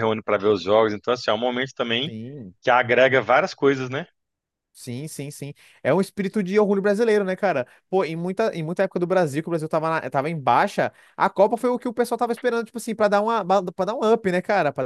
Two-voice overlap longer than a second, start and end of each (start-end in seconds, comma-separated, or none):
none